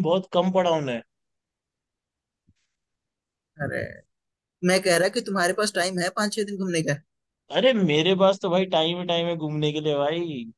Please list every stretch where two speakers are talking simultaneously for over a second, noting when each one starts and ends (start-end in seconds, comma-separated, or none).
none